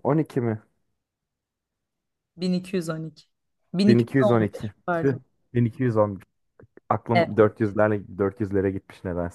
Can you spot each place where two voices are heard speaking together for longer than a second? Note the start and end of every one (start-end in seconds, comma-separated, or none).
3.9-5.2